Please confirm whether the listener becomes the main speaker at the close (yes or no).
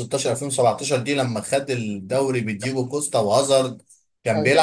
no